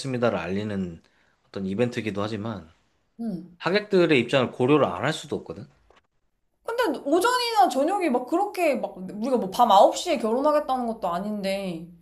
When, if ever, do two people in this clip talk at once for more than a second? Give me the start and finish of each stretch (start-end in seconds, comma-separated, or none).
none